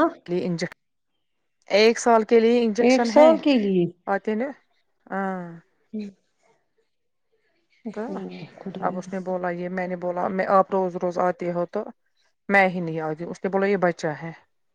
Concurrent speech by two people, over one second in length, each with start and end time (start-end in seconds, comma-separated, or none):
none